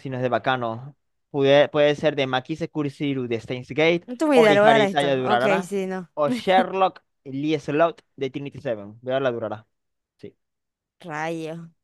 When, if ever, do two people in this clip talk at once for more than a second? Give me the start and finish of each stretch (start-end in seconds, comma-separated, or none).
4.1-5.7